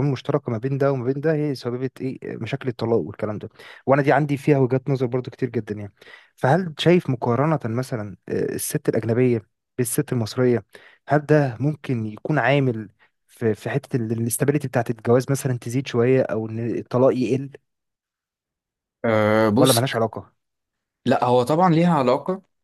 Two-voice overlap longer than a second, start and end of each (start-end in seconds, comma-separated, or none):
none